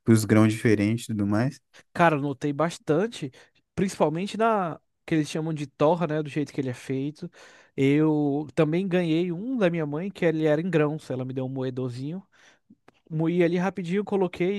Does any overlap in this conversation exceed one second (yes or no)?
no